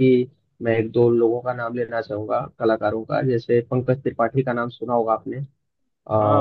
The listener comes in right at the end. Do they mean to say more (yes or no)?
yes